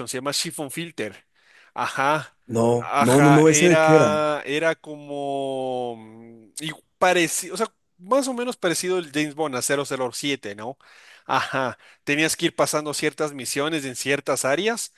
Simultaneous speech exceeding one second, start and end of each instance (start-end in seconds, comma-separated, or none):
2.8-4.2